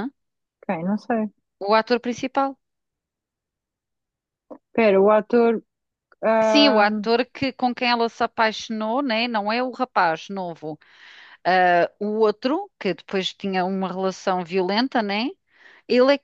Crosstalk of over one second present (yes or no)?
no